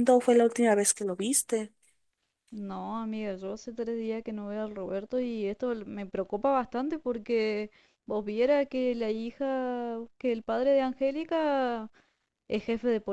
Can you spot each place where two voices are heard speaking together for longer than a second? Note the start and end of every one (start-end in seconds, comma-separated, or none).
none